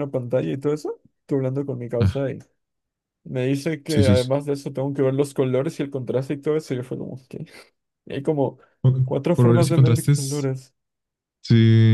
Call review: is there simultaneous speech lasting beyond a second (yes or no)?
yes